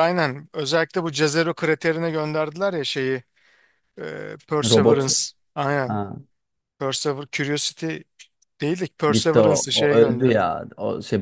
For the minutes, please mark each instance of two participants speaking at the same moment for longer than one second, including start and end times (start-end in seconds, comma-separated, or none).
9.1-10.5